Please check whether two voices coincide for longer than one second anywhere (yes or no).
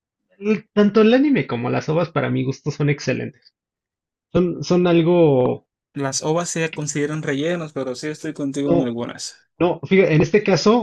no